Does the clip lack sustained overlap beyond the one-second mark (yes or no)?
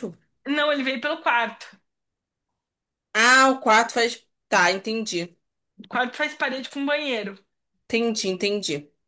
yes